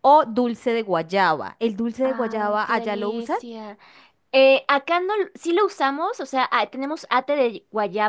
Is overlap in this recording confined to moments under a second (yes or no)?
no